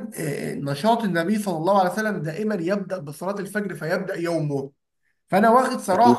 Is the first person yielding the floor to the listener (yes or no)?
no